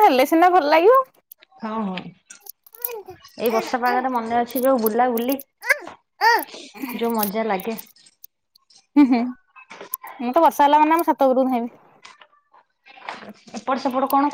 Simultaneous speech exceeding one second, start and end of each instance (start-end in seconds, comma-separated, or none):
none